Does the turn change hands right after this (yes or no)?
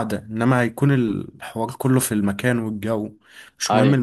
no